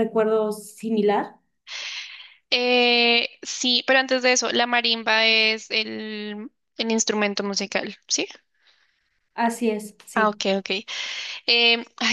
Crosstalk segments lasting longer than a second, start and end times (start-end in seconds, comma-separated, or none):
none